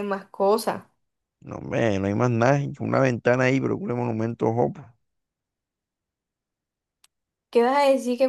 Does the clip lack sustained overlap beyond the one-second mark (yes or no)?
yes